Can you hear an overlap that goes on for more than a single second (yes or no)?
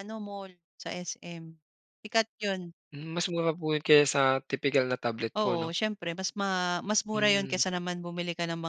no